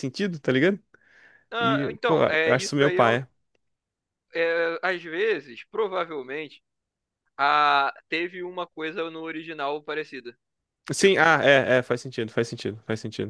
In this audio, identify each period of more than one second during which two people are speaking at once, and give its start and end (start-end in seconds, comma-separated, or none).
1.6-3.2